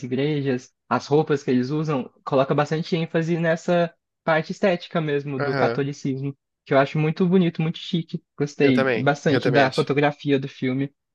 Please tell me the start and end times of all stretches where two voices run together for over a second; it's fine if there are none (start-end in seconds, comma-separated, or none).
8.6-9.9